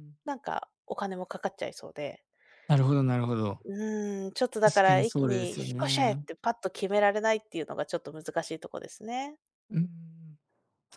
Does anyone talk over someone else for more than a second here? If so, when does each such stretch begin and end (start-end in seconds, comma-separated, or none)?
4.6-6.2